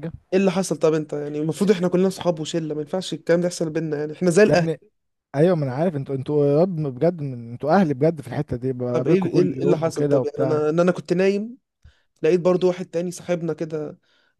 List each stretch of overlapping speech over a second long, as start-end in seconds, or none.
8.9-10.6